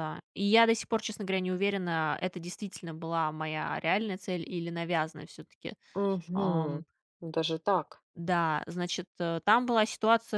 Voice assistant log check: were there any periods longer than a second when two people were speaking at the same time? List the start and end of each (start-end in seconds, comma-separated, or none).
none